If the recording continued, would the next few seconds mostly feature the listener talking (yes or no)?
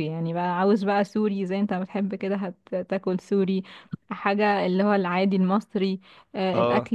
no